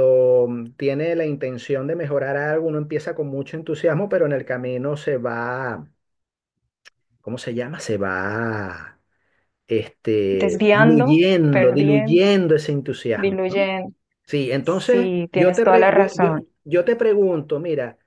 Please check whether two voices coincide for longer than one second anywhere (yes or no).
yes